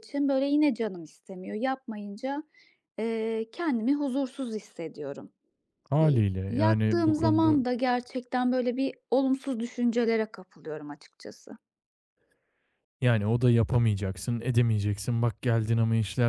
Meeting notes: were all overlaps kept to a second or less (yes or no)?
no